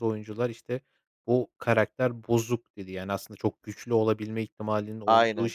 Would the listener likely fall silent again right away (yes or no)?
yes